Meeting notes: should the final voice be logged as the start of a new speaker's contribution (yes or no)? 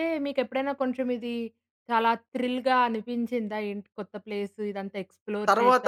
yes